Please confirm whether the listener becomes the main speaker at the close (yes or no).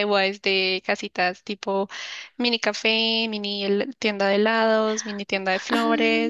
yes